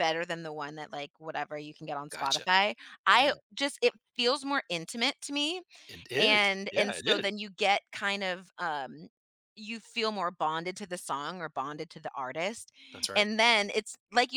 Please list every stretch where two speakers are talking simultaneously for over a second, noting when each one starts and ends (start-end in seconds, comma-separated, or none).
6.2-7.4